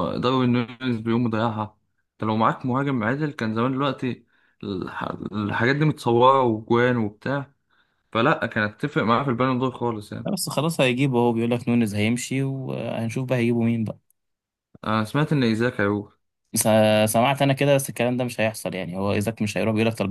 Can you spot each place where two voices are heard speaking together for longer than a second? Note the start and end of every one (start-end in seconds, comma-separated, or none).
none